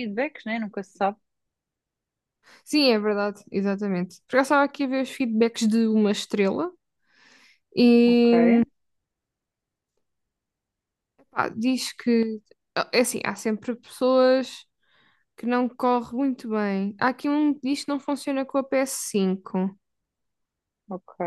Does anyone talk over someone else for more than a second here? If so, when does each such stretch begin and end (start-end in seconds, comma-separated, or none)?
none